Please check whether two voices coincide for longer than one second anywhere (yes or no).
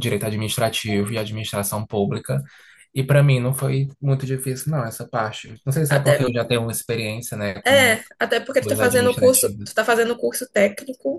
yes